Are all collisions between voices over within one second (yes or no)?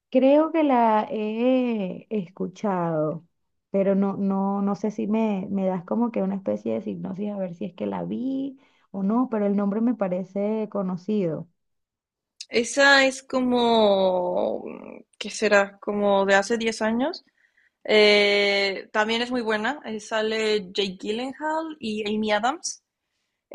yes